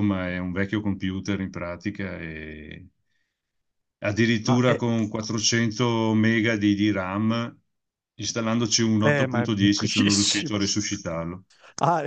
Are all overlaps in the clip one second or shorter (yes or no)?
no